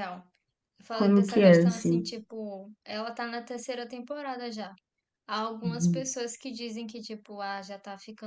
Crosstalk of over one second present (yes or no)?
yes